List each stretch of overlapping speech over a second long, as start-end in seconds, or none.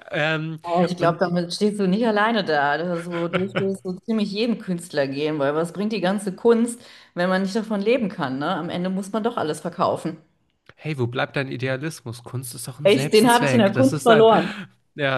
12.8-14.3